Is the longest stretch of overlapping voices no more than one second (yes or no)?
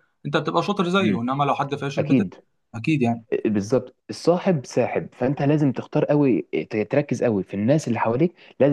yes